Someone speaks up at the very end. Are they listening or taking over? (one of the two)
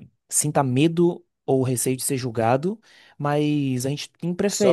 listening